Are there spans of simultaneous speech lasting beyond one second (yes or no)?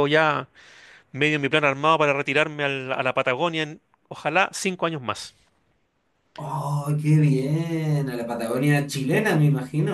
no